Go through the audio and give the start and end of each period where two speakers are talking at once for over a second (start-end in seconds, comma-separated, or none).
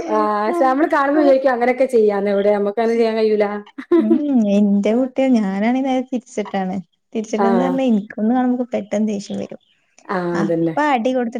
none